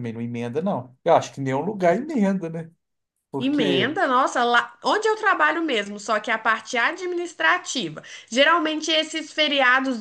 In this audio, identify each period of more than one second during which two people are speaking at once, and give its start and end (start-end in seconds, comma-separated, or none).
none